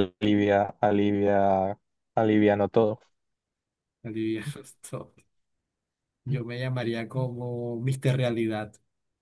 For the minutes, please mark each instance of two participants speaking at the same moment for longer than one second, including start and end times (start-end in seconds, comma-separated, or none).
none